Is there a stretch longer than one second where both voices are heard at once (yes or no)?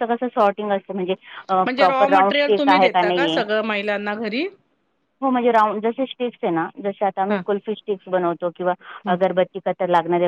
yes